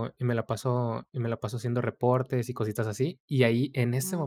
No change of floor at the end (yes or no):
yes